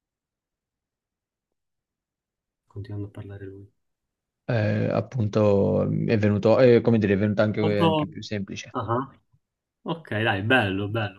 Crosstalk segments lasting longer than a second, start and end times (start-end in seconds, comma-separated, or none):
none